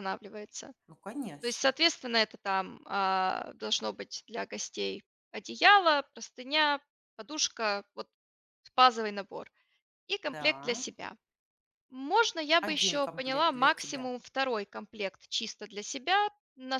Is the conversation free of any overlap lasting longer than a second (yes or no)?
no